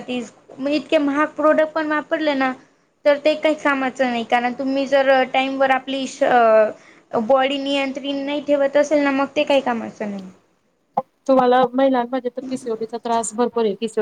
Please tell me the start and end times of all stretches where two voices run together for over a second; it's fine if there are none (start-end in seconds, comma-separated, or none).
none